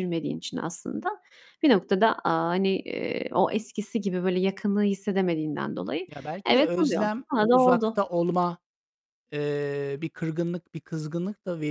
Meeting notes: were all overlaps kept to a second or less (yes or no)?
no